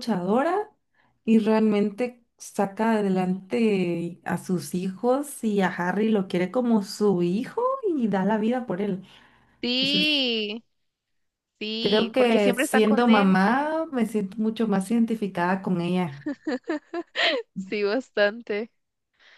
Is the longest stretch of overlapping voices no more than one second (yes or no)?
no